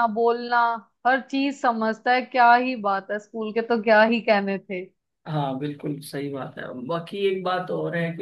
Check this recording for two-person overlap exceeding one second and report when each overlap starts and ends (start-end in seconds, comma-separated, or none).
none